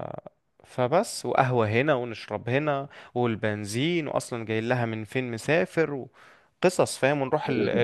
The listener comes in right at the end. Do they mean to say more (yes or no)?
no